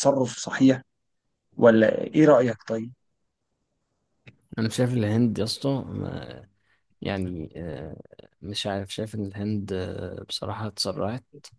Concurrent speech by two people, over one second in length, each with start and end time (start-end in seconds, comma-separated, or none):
none